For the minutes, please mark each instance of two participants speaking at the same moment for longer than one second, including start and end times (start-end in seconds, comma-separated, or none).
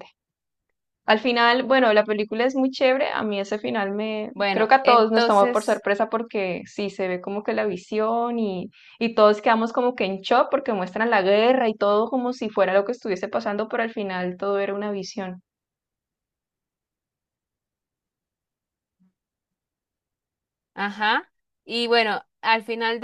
4.3-5.8